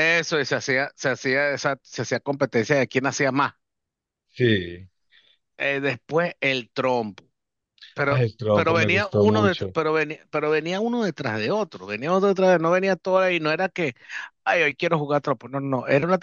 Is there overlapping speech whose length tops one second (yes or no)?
yes